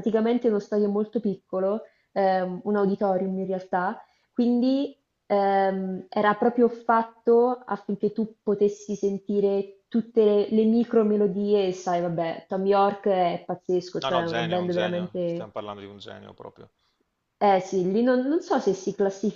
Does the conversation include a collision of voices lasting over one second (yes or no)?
yes